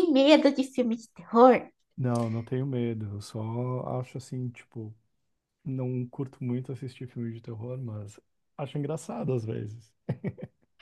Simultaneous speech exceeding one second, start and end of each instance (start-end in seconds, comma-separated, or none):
none